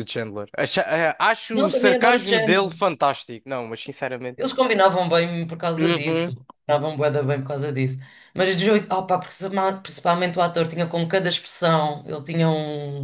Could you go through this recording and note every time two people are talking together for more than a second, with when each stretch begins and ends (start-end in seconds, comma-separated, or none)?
1.5-2.7